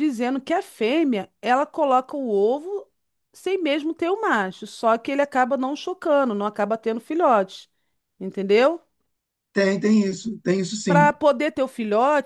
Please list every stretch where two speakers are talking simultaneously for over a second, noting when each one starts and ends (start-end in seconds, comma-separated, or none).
none